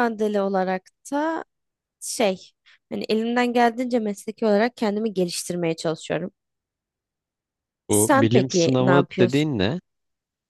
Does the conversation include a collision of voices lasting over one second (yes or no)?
yes